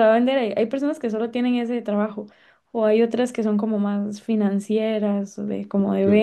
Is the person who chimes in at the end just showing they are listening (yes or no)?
no